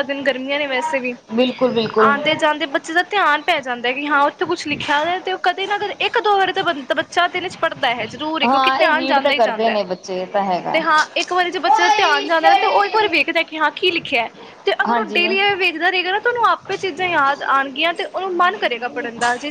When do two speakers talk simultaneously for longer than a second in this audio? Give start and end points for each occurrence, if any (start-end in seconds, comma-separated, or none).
8.4-9.8